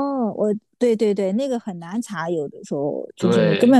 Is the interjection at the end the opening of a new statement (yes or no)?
no